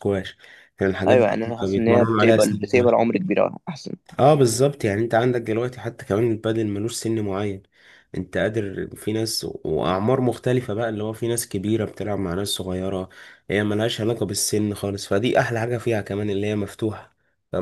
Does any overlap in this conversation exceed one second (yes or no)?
yes